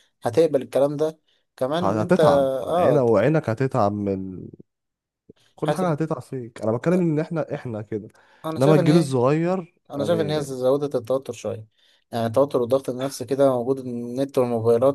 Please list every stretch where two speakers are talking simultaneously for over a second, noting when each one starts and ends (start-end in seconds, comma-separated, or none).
1.8-3.0